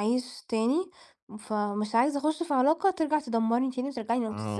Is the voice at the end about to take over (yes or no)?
yes